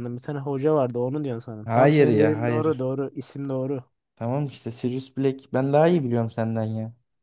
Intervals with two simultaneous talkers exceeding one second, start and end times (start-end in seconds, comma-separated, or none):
1.6-2.9